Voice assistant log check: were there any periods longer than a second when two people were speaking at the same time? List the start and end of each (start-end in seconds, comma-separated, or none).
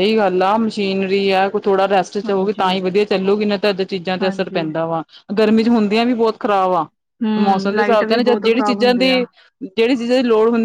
7.4-9.1